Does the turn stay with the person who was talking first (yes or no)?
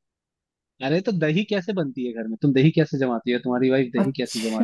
no